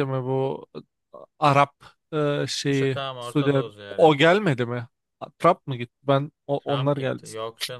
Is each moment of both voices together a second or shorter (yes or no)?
no